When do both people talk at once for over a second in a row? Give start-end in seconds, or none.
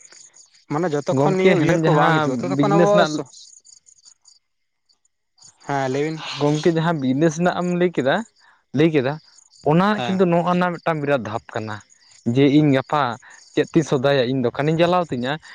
1.1-2.9